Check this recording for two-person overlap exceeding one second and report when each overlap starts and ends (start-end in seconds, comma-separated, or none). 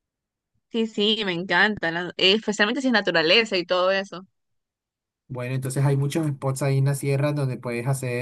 none